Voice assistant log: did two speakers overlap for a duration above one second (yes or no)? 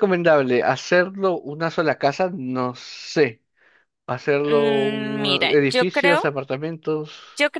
yes